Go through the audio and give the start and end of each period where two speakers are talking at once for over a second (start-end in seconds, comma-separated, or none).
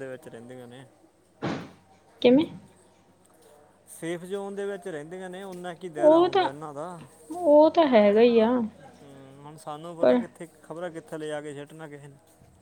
none